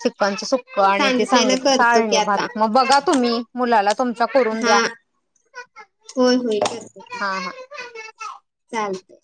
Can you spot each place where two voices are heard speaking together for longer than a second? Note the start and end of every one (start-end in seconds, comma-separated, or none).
1.0-2.5